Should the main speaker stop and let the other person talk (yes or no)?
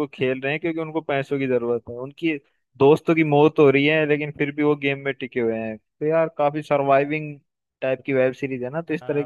yes